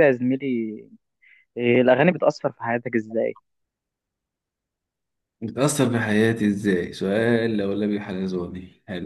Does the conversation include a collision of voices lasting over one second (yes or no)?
no